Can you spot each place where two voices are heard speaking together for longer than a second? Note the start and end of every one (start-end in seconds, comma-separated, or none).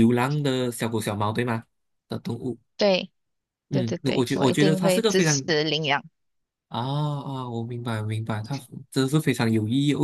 3.7-5.4